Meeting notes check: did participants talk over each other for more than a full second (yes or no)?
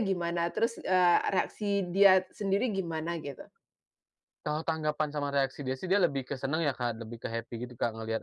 no